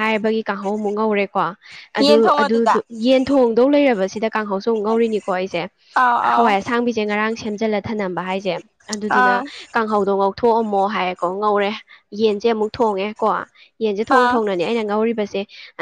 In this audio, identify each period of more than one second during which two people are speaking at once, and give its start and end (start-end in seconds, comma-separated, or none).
none